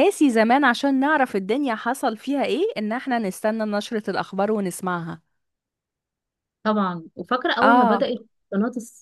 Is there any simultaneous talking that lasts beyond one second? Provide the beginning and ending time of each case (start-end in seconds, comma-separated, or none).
none